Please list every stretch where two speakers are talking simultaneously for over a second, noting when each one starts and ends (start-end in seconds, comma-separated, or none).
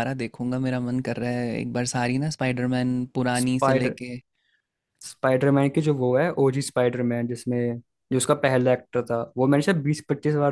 none